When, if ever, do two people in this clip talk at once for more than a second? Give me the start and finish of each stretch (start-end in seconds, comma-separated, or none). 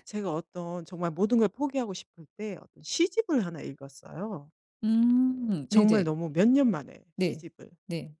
none